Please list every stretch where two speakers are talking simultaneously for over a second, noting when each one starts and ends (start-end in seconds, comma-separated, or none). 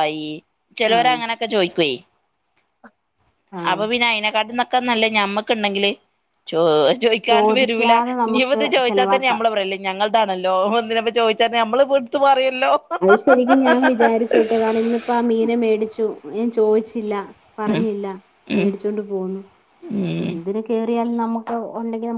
7.3-9.3